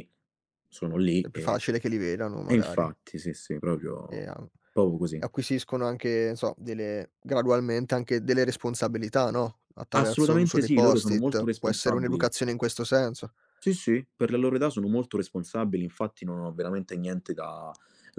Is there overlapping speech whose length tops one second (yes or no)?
yes